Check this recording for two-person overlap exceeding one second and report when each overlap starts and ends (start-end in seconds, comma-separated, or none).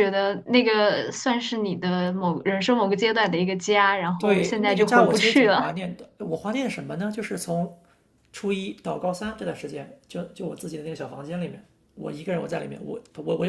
4.2-5.8